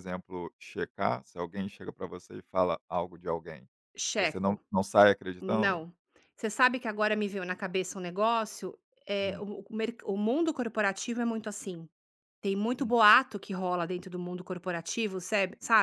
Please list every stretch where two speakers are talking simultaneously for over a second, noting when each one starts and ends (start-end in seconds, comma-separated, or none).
none